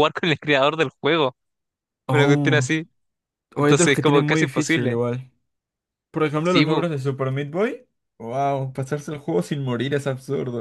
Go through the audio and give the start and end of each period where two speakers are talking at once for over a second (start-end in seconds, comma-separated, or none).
3.6-5.0